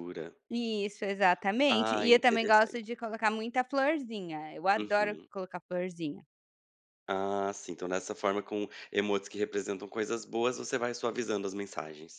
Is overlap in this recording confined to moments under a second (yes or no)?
no